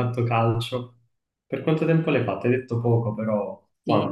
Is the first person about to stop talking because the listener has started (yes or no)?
yes